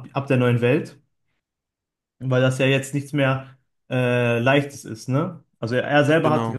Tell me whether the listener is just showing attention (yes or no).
yes